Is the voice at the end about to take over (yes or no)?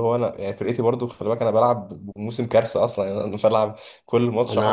yes